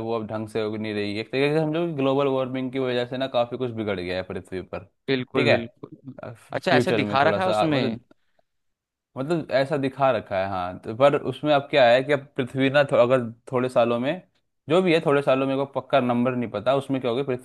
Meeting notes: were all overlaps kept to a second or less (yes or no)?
no